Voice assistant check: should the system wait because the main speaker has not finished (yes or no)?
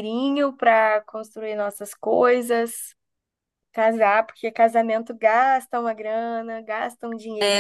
no